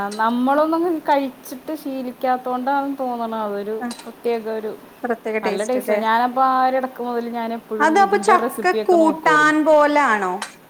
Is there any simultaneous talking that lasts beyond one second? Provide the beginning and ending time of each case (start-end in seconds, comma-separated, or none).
7.8-9.6